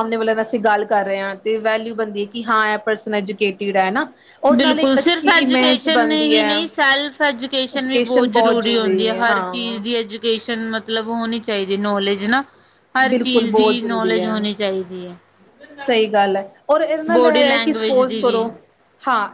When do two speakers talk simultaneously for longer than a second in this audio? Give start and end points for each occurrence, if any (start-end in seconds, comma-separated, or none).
4.6-6.5, 13.1-14.4, 17.1-18.4